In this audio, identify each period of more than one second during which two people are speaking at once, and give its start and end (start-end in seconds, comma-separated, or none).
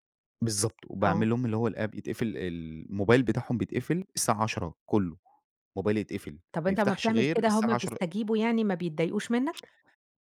6.5-8.0